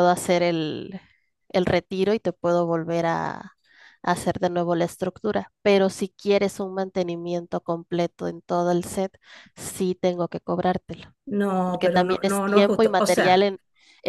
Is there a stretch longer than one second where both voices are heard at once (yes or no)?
yes